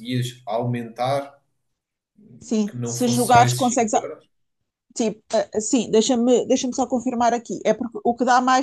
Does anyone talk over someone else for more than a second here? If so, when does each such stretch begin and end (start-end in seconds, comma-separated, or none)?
2.7-4.1